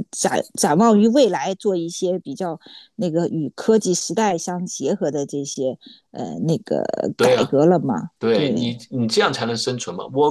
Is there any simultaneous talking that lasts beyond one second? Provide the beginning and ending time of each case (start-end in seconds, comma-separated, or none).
none